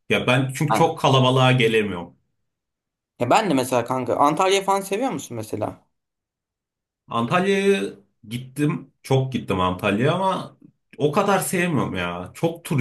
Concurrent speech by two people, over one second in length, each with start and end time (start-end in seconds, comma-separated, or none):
none